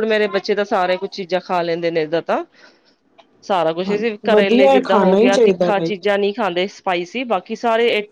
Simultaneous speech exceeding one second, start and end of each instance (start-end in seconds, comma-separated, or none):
4.3-5.9